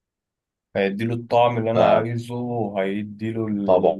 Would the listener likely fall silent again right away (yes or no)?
yes